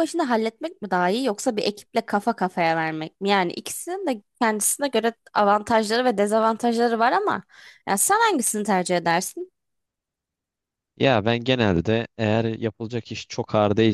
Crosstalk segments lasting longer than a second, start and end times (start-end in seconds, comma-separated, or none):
none